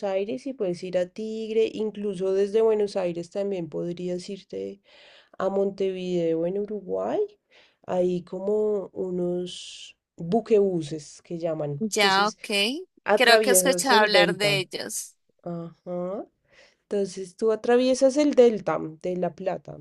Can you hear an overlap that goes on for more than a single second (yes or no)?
yes